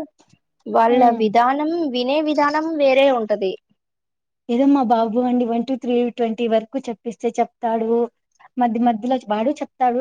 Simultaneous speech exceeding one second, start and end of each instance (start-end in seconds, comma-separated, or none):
none